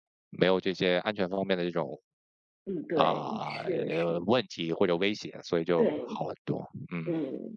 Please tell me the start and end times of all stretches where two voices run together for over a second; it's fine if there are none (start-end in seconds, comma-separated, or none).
2.9-4.3